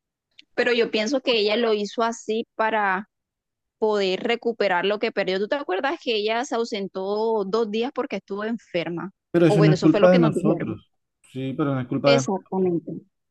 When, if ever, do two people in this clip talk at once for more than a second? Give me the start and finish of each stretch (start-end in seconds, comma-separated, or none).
9.3-10.8